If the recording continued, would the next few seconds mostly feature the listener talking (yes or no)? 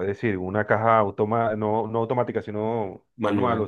no